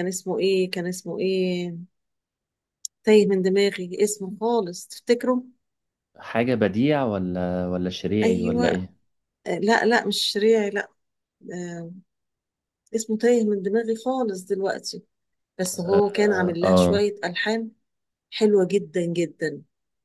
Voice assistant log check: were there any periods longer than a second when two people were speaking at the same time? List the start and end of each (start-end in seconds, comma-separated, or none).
15.8-17.1